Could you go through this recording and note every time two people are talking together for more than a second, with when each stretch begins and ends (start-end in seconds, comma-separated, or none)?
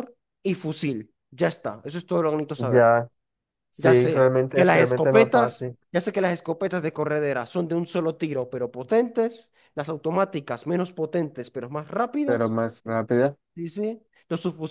3.8-5.8